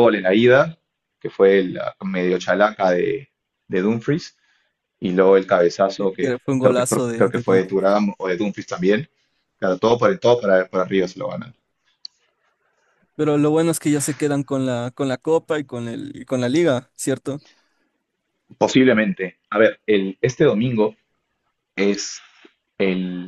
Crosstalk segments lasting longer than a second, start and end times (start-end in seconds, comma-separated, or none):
6.0-7.9